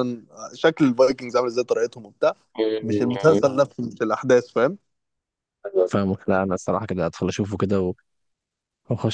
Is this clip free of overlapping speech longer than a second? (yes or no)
yes